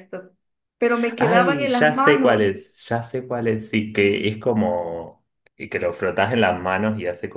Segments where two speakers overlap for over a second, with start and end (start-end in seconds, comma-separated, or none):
1.2-2.5